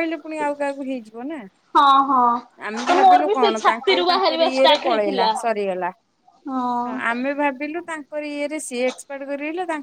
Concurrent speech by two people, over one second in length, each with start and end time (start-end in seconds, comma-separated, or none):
2.9-5.3